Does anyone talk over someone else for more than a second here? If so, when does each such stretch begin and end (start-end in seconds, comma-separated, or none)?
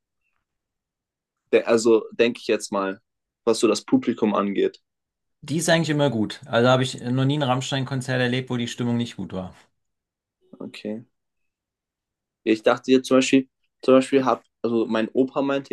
none